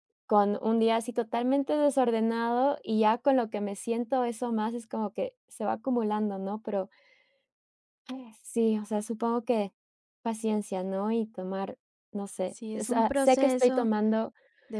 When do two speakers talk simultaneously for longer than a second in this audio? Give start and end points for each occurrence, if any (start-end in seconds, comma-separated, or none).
12.4-13.9